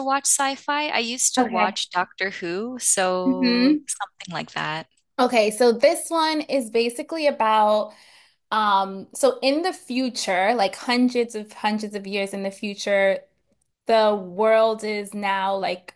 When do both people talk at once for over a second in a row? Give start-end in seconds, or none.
none